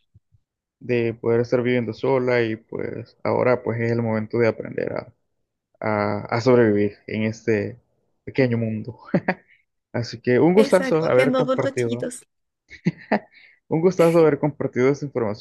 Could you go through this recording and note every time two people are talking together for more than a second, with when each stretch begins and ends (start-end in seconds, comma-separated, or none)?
10.6-12.1